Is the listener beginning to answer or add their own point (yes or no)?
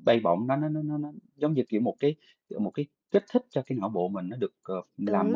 yes